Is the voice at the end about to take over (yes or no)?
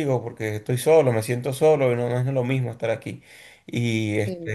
no